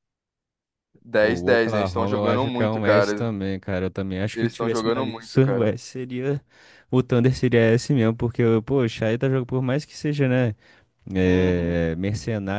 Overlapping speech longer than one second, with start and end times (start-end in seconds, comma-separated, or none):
1.2-3.3, 4.3-5.7